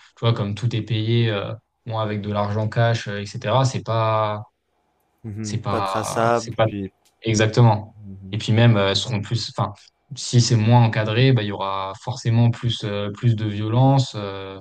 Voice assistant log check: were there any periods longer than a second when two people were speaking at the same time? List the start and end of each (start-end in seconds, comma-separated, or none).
5.4-6.7